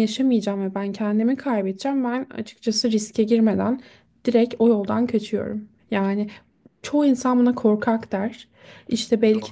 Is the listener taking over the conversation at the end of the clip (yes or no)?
no